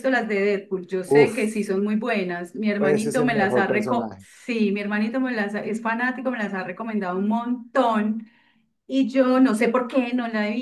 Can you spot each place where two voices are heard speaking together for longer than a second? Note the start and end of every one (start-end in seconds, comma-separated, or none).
2.8-4.2